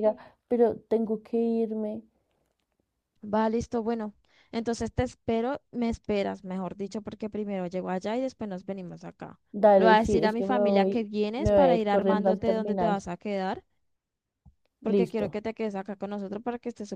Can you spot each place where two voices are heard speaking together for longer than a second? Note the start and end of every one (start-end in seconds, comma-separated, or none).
9.8-13.1